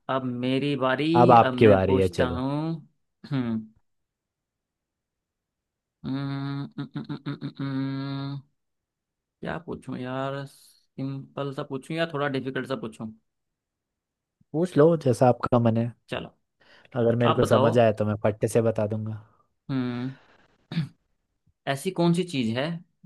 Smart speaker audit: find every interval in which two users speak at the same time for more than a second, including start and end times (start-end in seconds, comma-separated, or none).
1.2-2.5